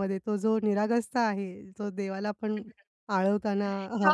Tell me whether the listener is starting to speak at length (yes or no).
yes